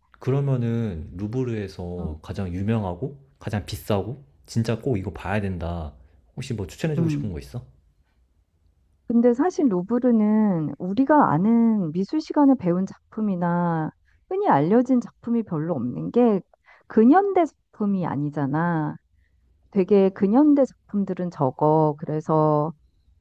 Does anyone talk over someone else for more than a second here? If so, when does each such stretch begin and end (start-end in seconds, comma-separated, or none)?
none